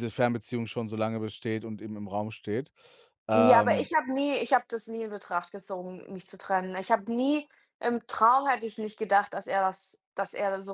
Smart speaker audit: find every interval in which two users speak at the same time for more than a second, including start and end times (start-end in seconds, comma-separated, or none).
none